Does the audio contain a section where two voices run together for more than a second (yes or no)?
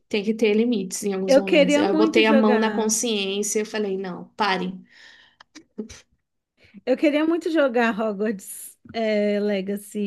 yes